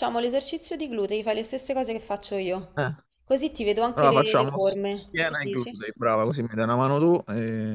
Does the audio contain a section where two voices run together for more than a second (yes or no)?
yes